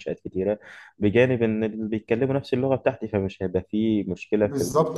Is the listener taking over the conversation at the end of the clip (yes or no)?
yes